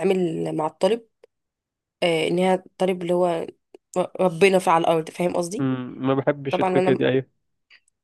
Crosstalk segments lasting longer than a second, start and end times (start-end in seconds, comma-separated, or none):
none